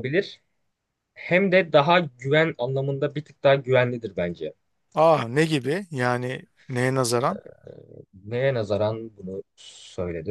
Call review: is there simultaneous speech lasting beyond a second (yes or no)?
no